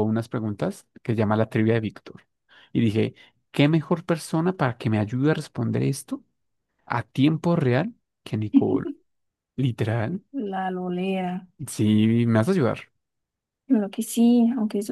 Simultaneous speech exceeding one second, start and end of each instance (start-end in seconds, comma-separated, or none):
none